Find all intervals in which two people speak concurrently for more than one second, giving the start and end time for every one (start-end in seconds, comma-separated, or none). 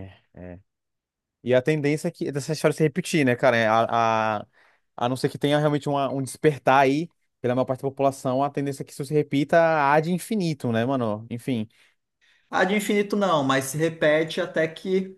none